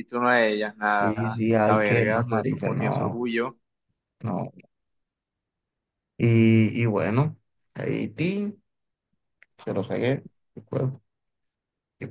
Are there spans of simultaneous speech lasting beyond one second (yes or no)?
yes